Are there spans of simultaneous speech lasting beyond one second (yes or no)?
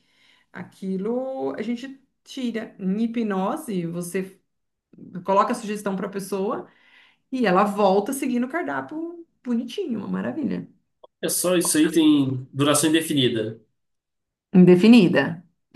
no